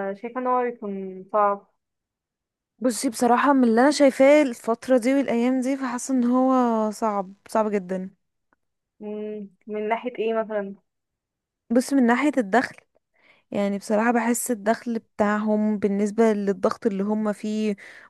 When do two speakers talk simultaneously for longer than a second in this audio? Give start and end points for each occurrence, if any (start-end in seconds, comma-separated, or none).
none